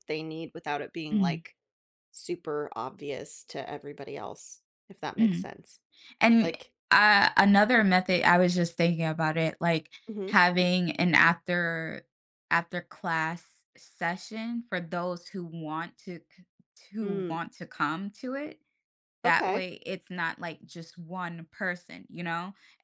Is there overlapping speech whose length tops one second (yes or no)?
no